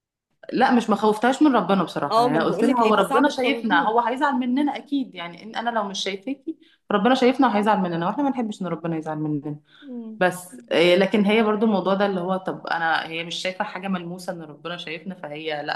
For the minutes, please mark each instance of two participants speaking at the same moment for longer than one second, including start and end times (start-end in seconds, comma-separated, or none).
2.1-3.9